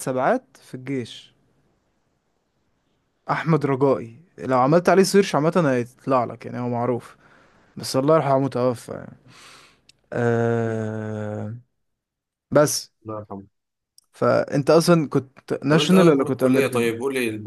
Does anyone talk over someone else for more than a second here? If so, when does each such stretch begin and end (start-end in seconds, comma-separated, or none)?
15.7-16.9